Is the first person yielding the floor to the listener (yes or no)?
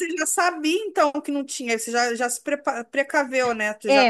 yes